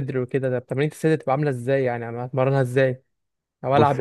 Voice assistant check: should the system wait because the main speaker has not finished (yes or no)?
no